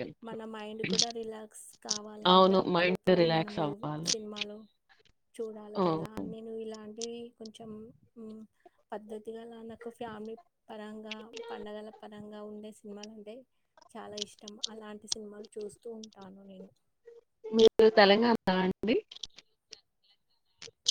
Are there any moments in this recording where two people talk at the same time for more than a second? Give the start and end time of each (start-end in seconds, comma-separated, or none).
2.3-4.1